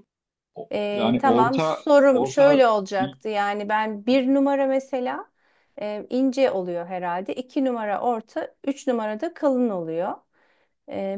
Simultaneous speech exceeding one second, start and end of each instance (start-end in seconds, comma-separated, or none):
0.7-2.6